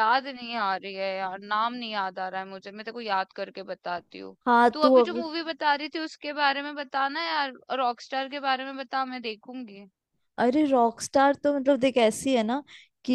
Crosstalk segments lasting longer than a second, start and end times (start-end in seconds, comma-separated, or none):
none